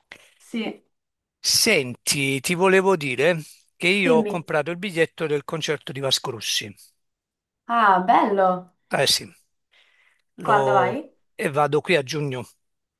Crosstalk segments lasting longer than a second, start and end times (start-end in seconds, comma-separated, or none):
none